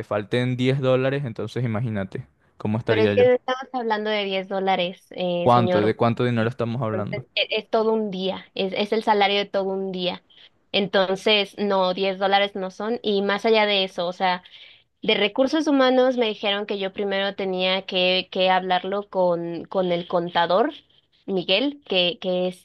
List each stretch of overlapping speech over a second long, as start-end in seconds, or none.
none